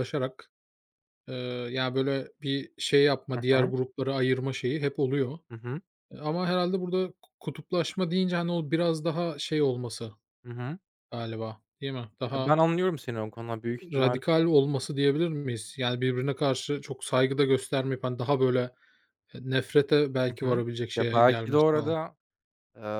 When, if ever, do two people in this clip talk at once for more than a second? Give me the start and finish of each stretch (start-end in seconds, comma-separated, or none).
20.3-21.9